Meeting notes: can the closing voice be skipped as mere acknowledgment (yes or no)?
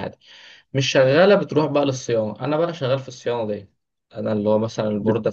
yes